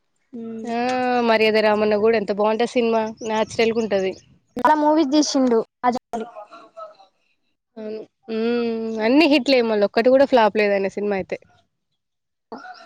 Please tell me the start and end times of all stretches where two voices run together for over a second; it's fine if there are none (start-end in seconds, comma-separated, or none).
none